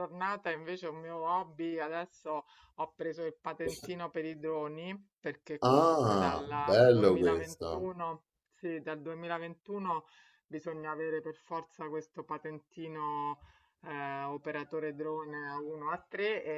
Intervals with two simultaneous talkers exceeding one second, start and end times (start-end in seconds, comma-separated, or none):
5.6-7.9